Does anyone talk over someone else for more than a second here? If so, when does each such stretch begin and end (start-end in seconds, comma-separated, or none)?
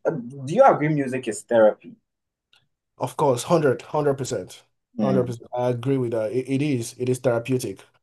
none